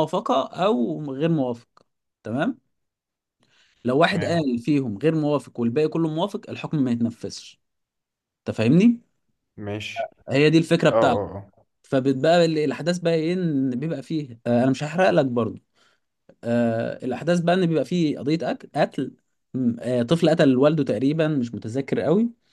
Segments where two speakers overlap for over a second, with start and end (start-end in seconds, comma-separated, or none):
none